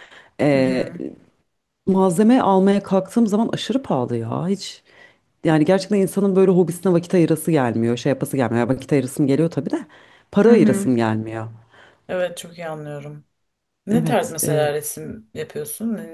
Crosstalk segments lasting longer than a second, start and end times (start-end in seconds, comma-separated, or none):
none